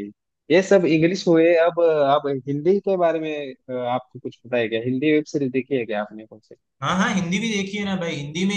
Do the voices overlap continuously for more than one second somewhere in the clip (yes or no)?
no